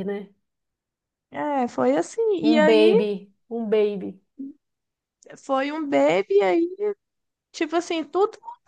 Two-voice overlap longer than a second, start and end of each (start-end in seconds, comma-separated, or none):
none